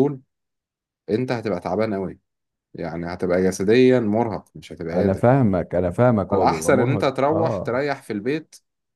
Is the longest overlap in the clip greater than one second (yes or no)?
yes